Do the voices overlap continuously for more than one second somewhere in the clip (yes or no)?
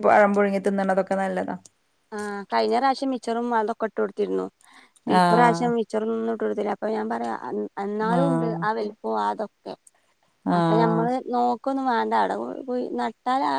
no